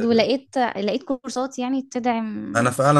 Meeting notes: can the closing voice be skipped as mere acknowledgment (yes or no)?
no